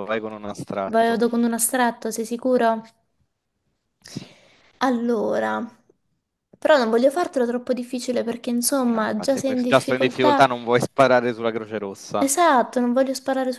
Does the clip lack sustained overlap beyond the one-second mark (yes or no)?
no